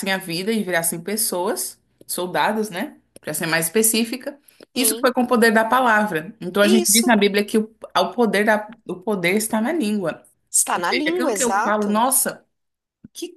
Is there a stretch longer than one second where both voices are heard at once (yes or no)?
yes